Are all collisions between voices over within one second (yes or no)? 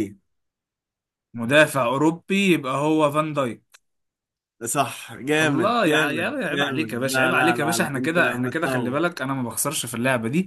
no